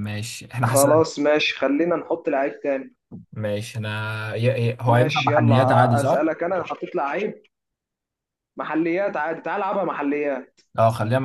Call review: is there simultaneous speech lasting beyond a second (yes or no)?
yes